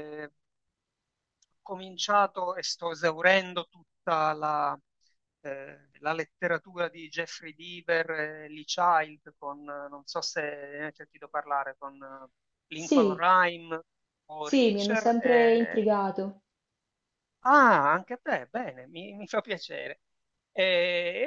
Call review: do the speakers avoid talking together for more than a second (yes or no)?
no